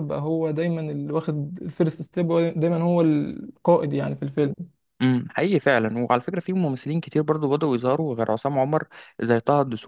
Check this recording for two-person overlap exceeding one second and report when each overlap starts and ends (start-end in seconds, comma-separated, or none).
none